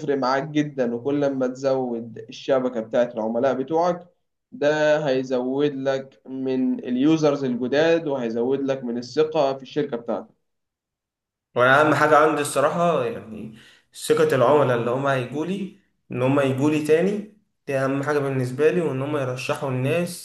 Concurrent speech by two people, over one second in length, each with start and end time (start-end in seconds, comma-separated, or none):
none